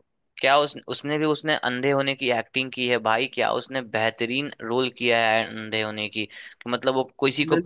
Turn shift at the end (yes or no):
no